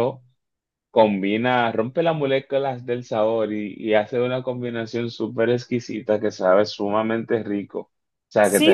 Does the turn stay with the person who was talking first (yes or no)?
no